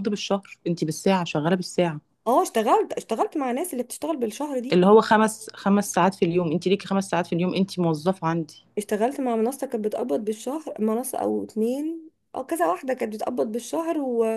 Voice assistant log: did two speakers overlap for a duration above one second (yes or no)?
no